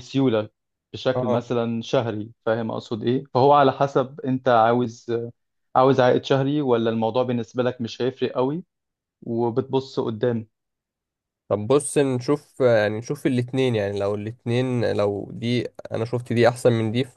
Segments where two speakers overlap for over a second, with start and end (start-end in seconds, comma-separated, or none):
none